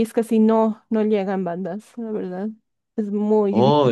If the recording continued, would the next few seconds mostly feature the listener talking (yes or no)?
yes